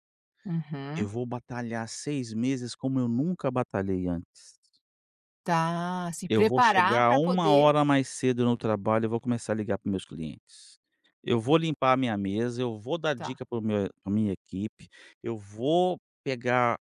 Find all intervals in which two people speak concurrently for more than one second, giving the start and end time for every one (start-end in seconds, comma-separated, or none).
6.3-7.7